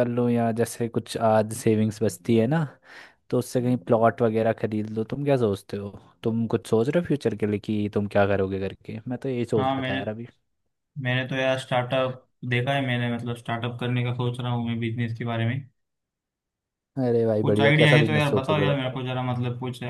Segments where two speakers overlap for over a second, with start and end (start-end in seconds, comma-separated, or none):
17.4-19.0